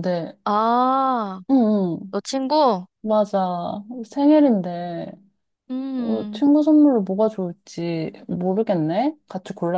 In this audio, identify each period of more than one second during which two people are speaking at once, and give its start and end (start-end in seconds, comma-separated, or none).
none